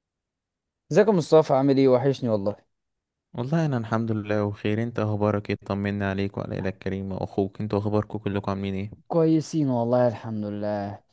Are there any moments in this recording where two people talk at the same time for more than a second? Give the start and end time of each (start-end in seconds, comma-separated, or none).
none